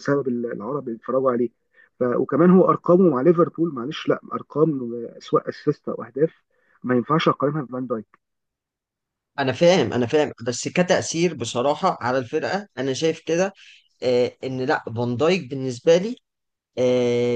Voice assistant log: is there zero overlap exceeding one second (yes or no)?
yes